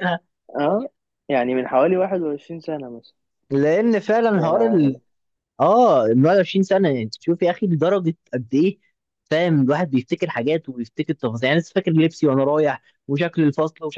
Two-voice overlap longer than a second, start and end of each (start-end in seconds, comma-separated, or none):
none